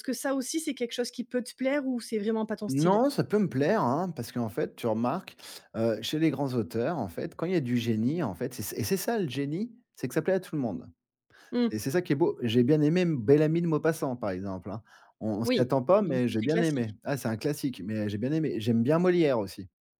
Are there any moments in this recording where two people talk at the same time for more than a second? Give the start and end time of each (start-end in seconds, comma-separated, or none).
15.4-16.9